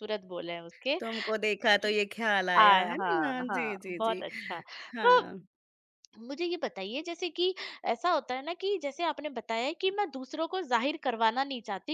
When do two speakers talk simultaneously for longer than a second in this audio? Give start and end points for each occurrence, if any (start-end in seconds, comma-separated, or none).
2.6-4.2